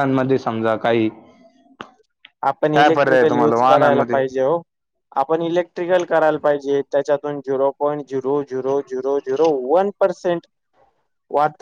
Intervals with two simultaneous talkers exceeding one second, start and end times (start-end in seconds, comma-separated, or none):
2.7-4.2